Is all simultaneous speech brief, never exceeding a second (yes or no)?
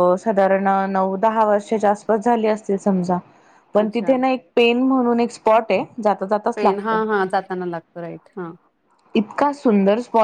yes